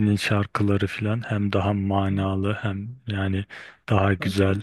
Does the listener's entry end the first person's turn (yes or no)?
no